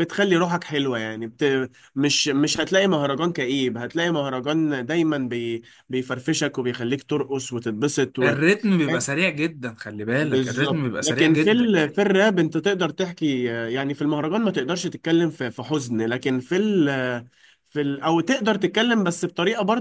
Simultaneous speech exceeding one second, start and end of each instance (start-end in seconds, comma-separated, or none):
10.2-11.7